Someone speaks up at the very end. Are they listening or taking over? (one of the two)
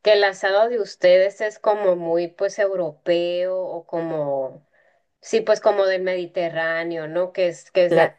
listening